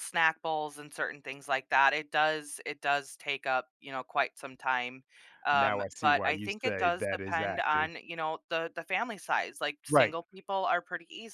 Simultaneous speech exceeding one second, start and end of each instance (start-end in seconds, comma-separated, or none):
5.5-7.9